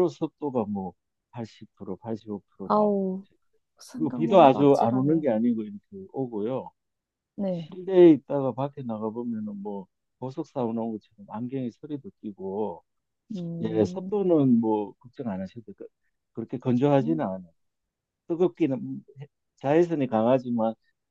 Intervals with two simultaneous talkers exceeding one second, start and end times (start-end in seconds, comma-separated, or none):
4.0-5.2